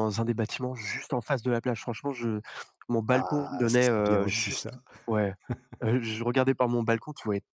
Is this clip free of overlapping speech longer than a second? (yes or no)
no